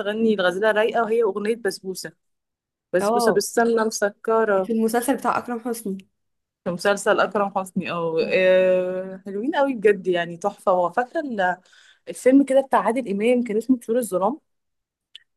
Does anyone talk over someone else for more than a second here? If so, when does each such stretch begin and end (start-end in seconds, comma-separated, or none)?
none